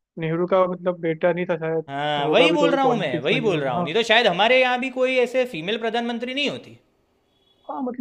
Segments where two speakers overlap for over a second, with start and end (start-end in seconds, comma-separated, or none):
1.9-3.9